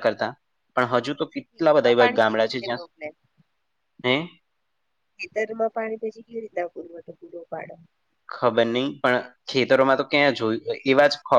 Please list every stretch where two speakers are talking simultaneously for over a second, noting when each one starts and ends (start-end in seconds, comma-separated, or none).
1.1-2.8